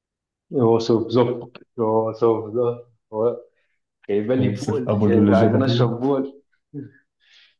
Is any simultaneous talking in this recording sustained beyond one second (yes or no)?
yes